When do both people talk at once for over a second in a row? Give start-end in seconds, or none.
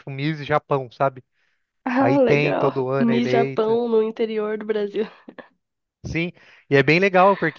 2.0-3.8